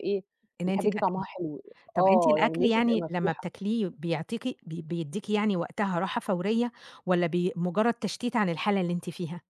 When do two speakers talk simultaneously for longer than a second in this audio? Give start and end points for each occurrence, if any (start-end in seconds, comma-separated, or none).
2.0-3.5